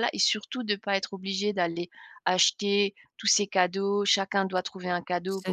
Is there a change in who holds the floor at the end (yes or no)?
no